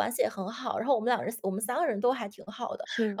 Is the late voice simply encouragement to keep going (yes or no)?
yes